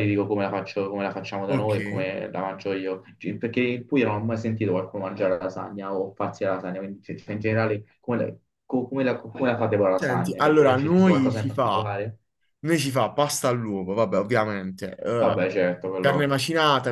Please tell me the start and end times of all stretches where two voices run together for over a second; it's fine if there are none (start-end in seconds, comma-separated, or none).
9.9-11.9